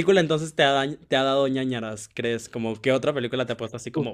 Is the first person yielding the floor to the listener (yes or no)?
yes